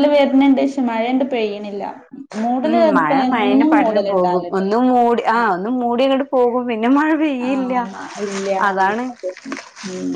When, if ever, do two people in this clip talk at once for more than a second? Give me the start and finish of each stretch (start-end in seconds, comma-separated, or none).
2.7-4.6